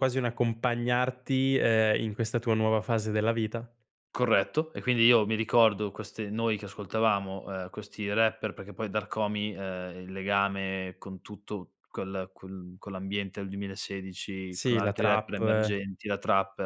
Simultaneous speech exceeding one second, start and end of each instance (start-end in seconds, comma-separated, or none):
14.5-15.8